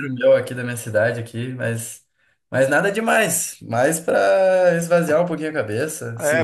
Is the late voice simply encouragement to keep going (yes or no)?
no